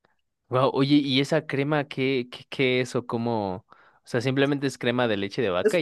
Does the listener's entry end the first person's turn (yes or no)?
yes